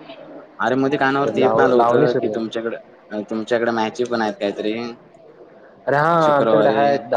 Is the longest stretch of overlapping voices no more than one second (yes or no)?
no